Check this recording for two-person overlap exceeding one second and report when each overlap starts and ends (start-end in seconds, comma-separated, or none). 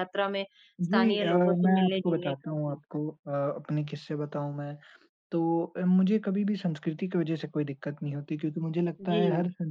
0.8-2.8